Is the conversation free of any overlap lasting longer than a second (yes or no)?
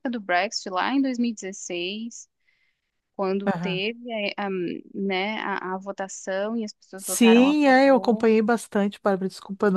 no